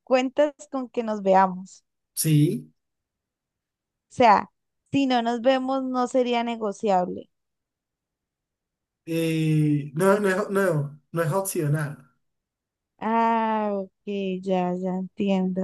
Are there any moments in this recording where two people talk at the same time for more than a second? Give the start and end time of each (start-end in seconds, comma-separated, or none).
none